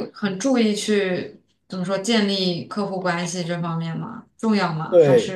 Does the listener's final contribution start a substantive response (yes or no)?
yes